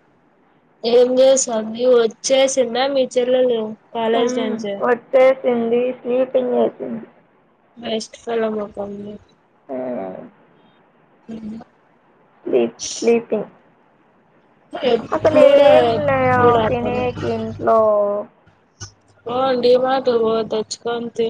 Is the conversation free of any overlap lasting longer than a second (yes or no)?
no